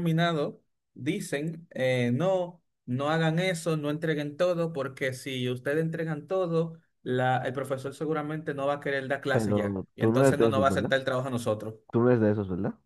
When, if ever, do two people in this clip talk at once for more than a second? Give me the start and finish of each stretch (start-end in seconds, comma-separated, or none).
9.3-10.9